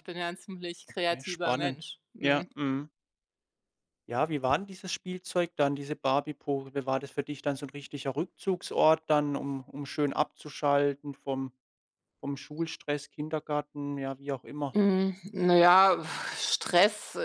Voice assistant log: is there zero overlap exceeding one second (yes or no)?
no